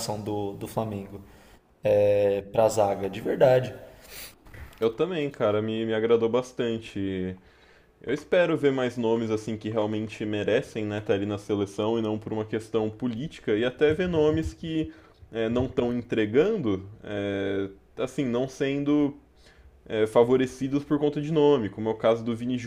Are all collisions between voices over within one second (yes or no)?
yes